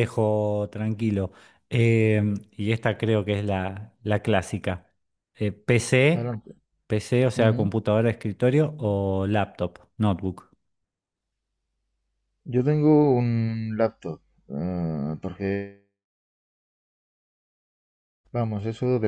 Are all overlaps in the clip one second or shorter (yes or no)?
yes